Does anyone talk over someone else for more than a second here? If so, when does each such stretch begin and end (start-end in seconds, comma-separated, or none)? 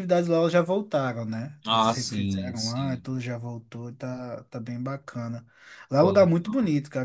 1.7-3.1